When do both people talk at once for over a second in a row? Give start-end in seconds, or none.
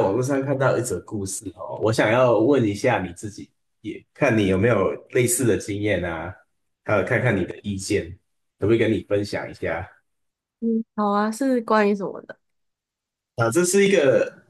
none